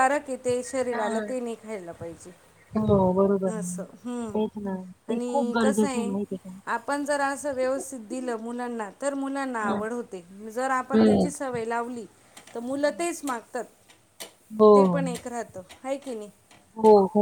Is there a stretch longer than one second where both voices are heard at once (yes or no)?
yes